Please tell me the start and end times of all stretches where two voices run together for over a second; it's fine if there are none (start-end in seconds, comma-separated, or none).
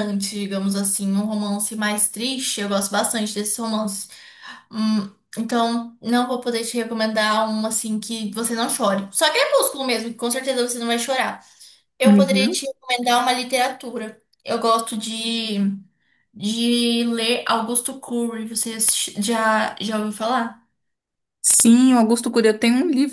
none